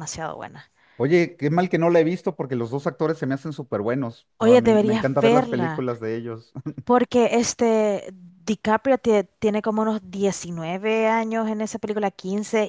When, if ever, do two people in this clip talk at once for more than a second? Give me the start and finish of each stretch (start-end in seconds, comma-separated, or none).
4.4-5.8